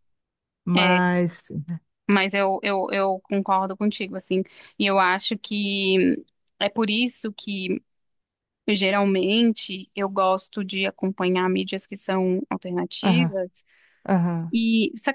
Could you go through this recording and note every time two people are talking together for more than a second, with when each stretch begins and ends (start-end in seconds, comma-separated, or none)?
none